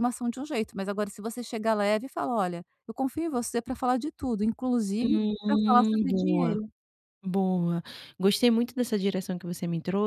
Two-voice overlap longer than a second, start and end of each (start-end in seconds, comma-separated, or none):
5.0-6.5